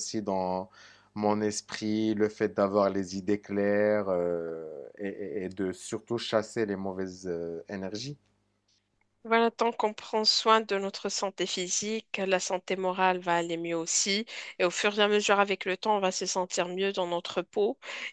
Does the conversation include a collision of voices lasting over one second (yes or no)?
no